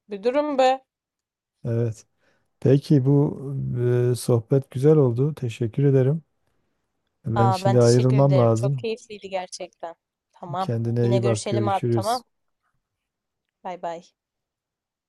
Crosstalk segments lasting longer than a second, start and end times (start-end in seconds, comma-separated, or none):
7.3-8.9, 10.6-12.2